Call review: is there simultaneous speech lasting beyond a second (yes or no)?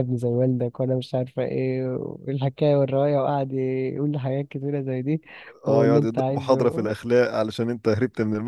yes